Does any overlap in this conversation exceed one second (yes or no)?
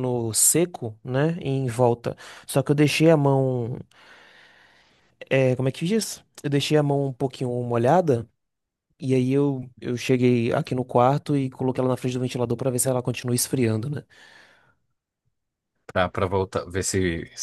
no